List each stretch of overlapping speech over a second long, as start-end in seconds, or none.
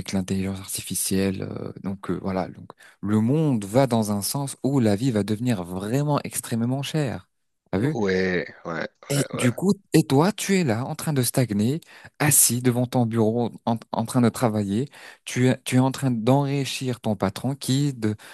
none